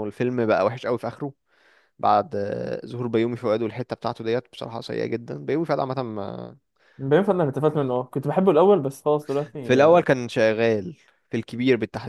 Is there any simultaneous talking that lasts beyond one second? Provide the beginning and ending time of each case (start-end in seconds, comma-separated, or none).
none